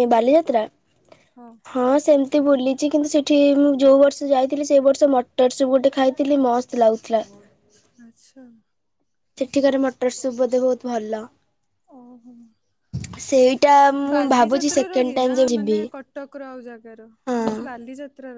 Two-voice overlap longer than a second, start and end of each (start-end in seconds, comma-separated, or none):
14.1-15.8